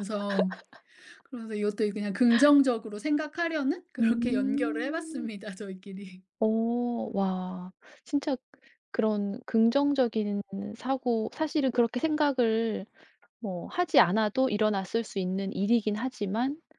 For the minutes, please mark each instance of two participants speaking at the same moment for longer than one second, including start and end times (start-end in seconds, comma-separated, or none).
4.0-5.3